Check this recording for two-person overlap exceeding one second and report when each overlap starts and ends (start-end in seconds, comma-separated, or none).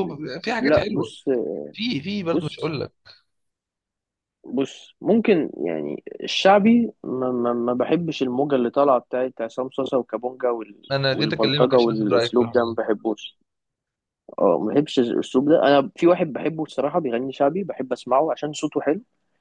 10.9-12.6